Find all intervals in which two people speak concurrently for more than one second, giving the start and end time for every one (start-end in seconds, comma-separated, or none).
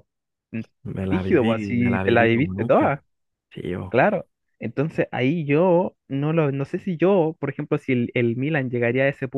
1.1-3.0